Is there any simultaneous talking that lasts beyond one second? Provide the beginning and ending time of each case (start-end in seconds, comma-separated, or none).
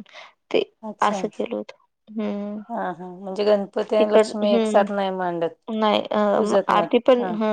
4.0-5.5